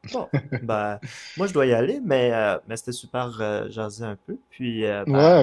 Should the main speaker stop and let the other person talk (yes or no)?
yes